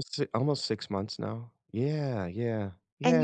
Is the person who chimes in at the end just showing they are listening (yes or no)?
no